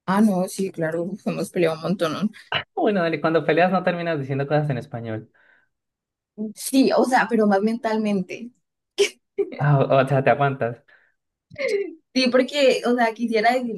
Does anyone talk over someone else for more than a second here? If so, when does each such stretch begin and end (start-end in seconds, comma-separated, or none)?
none